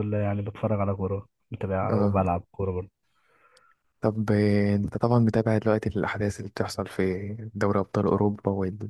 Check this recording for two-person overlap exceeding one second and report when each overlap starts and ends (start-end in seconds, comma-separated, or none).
none